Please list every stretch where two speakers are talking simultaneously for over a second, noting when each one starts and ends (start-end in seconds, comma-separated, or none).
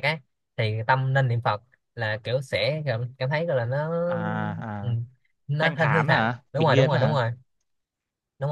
5.6-7.2